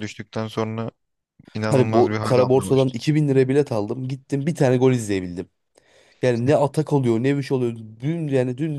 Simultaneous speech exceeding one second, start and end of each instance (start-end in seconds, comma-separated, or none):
1.7-2.9